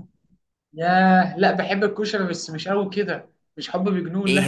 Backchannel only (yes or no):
no